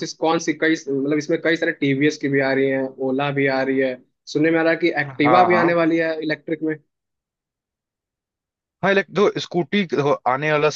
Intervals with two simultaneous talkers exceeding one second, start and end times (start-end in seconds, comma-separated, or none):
none